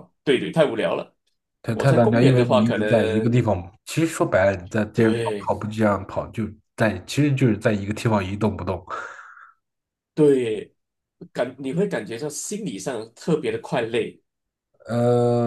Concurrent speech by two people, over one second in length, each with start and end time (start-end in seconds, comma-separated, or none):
1.7-3.3